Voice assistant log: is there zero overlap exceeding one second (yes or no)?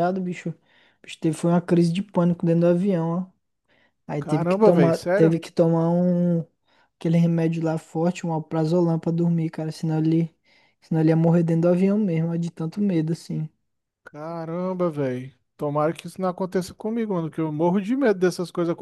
no